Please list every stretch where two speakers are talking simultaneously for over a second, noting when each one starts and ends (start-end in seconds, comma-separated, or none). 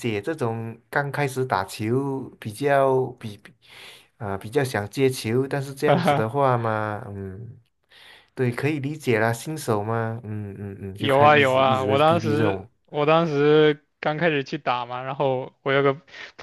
11.0-12.7